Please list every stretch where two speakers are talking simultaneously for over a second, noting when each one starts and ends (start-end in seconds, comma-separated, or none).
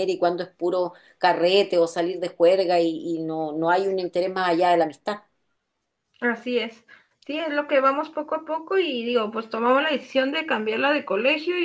none